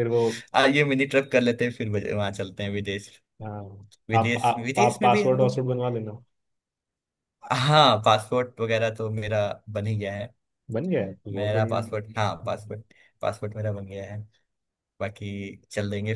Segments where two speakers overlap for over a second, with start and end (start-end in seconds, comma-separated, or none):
4.1-5.6